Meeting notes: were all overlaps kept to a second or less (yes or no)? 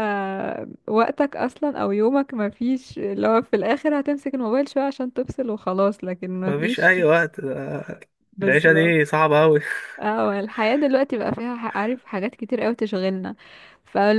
yes